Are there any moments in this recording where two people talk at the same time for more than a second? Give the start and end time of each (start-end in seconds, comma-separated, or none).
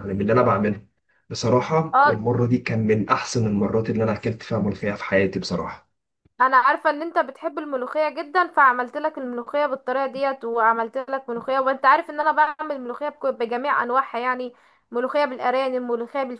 none